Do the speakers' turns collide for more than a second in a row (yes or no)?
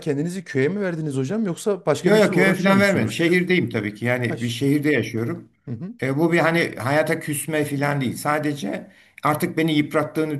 yes